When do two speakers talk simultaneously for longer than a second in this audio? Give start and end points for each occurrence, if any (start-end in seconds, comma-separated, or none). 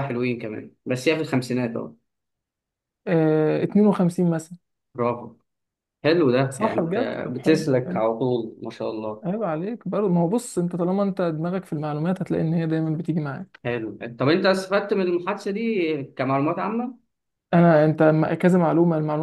6.5-8.0